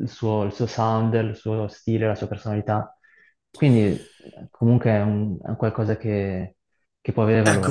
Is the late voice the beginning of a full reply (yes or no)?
yes